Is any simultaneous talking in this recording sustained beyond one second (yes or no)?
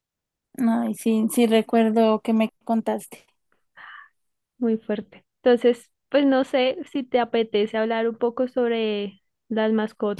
no